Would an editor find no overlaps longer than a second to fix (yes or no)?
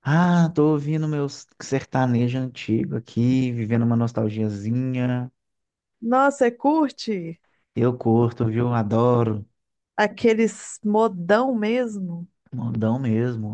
yes